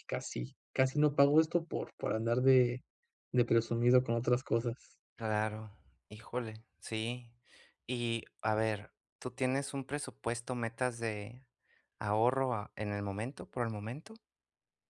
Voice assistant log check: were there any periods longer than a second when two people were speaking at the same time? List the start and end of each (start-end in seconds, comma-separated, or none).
none